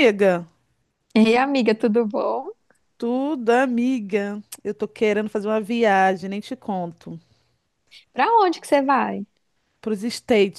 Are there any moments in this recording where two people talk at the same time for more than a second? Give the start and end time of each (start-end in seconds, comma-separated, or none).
none